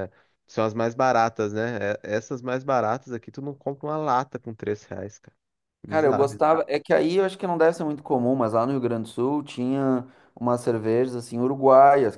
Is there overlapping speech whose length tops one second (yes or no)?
no